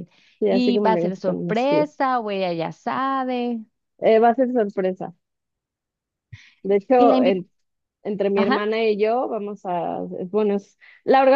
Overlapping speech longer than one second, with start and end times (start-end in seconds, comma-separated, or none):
0.6-1.9